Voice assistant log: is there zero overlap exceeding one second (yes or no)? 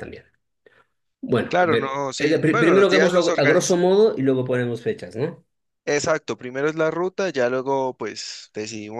no